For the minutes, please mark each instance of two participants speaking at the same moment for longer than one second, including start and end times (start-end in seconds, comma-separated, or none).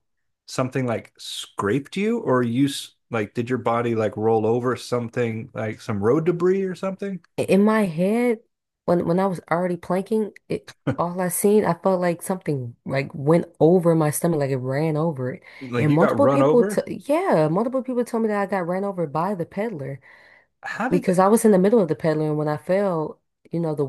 15.6-16.8